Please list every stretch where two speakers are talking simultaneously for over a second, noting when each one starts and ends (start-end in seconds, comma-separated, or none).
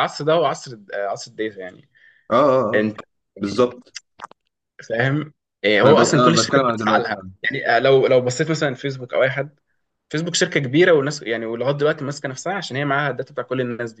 5.8-7.3